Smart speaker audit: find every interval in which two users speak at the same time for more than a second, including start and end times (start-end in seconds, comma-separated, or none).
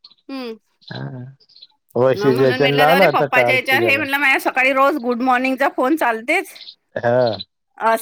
2.2-4.0